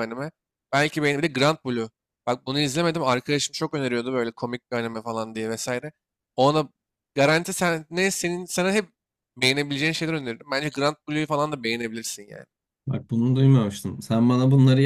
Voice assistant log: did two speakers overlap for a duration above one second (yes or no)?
no